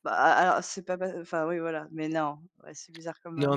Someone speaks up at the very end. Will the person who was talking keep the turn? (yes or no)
no